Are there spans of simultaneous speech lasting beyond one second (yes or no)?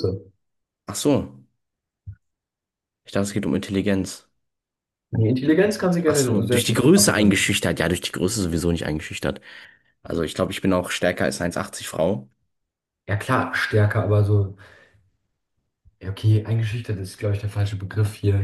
yes